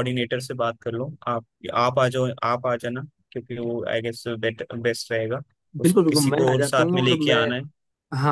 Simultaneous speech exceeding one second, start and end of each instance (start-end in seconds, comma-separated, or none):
5.8-7.4